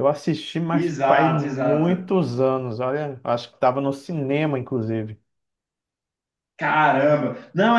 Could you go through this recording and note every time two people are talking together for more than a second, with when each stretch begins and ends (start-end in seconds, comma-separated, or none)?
0.7-2.1